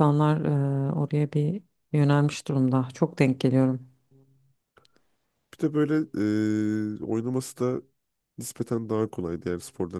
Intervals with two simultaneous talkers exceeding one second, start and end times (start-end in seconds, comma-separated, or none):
none